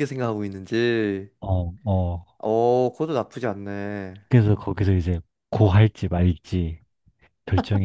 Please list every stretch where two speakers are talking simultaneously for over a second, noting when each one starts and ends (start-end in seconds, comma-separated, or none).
none